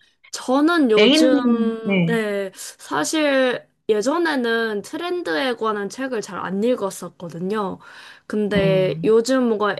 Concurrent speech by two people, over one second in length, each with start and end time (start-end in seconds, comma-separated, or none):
1.0-2.2